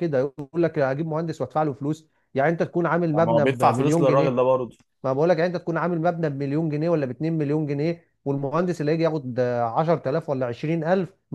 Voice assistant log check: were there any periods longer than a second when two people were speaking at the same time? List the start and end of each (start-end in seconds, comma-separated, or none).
3.1-4.4